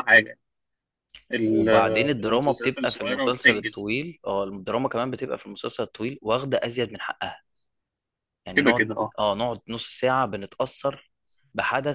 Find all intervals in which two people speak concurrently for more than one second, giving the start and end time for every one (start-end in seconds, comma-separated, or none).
1.4-3.9